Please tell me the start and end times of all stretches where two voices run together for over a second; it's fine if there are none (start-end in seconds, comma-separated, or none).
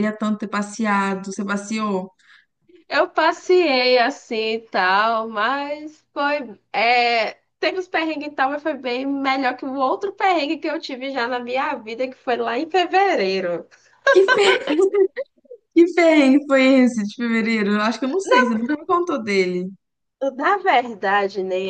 none